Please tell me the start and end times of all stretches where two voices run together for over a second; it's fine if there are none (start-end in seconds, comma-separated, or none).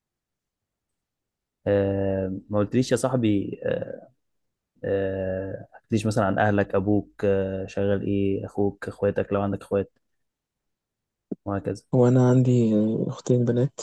none